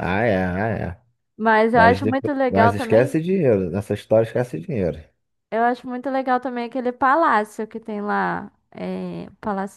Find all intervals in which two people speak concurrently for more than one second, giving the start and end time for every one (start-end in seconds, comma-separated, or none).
1.7-3.2